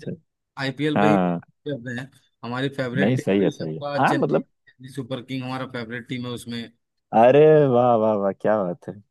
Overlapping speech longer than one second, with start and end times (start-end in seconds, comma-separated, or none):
3.0-4.5